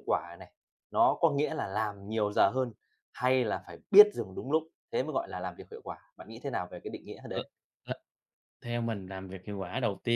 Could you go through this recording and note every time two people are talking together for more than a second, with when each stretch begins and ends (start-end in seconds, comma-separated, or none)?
none